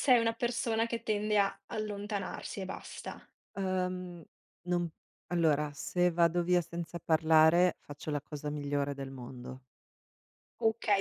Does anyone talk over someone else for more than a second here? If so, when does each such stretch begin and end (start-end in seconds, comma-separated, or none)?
none